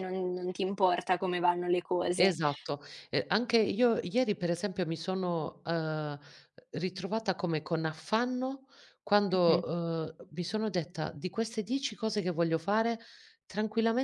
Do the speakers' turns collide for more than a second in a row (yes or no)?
no